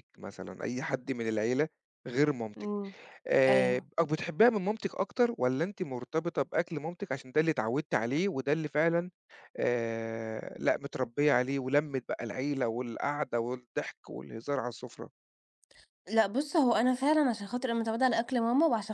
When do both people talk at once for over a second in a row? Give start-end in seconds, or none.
none